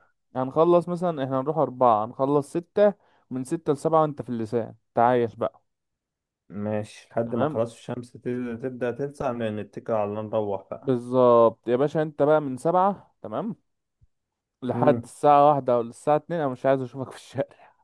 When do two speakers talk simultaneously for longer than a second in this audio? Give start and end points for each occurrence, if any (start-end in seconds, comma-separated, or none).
none